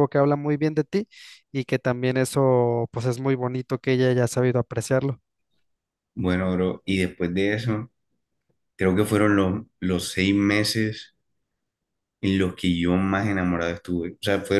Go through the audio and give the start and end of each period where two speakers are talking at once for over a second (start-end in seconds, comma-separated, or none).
none